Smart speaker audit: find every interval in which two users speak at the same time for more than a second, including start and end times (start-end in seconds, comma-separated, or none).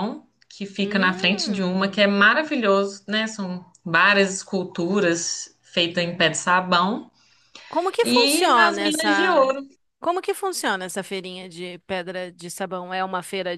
0.8-2.0, 8.0-9.5